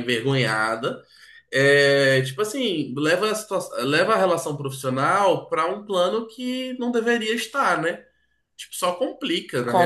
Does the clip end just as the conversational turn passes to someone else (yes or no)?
yes